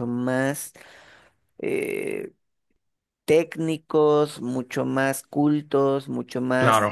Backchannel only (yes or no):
yes